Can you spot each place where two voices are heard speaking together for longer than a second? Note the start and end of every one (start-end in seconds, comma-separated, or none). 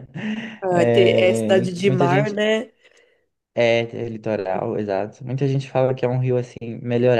0.7-2.4